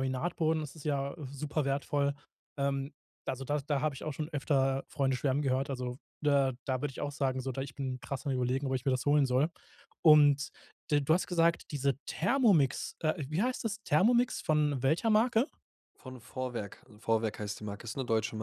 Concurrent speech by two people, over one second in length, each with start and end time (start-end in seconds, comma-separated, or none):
none